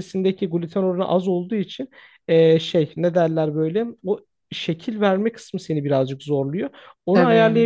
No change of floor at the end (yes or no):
yes